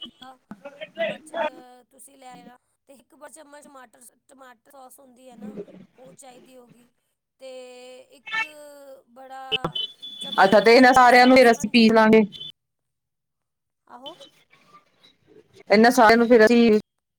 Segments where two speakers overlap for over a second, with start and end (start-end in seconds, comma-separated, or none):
10.4-11.9